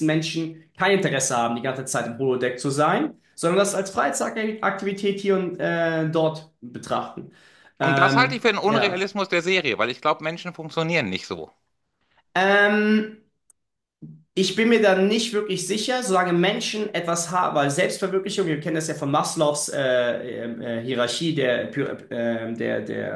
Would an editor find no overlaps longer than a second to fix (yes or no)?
no